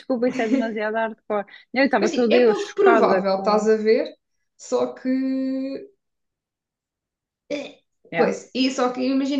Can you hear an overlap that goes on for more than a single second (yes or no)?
yes